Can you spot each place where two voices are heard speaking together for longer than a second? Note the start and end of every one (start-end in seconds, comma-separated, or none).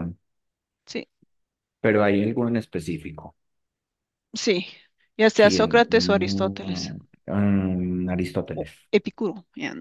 5.3-6.9